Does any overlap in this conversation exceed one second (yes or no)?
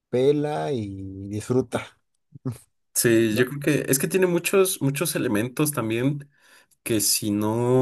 no